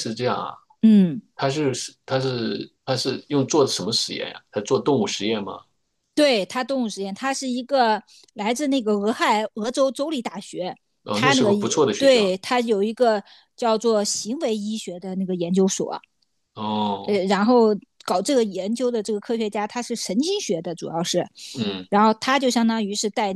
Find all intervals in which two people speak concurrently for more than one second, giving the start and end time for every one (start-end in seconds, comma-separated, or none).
11.1-12.3